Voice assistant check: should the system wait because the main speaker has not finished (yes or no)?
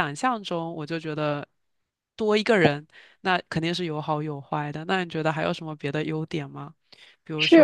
no